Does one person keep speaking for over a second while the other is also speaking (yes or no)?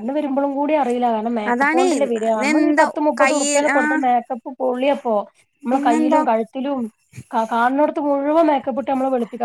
yes